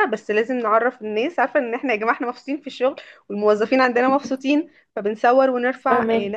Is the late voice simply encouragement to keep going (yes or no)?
yes